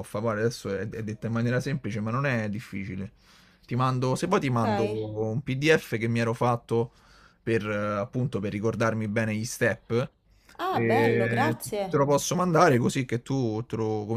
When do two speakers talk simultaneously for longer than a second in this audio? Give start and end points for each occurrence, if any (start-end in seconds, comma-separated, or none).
10.7-12.0